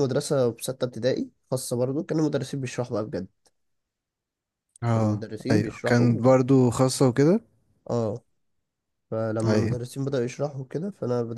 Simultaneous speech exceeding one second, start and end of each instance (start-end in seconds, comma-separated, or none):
4.9-6.3